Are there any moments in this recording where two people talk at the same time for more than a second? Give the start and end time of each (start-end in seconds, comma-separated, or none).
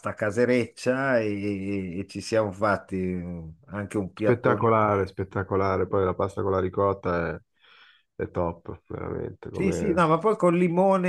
none